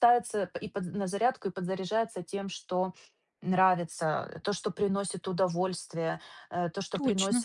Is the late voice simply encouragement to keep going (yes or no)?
yes